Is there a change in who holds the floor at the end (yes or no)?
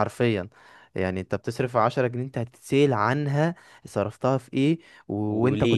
no